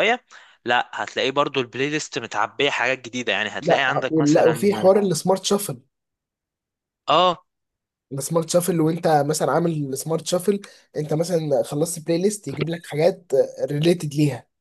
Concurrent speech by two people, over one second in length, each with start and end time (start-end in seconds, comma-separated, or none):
3.6-4.9